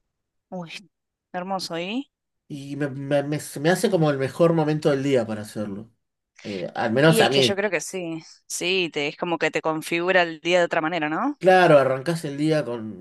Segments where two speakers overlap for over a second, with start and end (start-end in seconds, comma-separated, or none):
none